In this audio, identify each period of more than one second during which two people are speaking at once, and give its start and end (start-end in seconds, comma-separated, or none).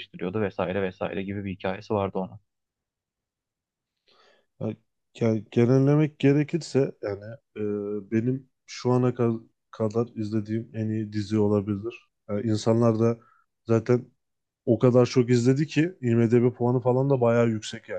none